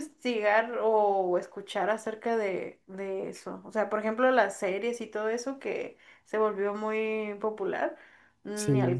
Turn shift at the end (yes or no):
no